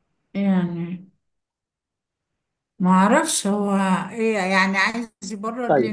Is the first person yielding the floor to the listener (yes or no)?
yes